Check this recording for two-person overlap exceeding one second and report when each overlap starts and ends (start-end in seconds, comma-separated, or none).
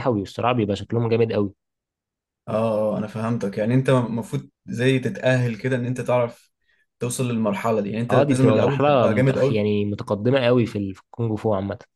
8.1-9.6